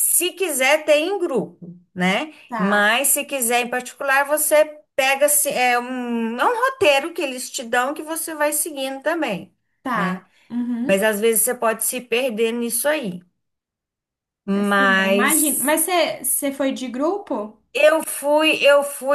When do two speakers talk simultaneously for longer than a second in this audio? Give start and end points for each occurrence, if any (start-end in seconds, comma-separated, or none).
14.5-15.8